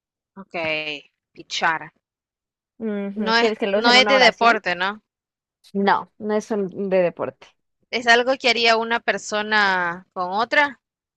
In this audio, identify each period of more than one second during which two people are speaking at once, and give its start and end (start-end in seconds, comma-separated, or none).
3.2-4.6